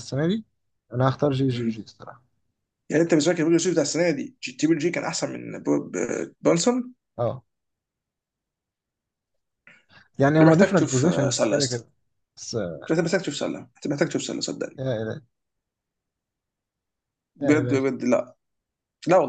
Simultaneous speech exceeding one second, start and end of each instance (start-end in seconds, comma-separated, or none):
10.4-11.8